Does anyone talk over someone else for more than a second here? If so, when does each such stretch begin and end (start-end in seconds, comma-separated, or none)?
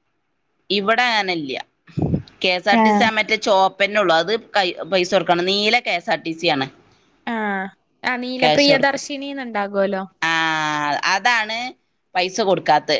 none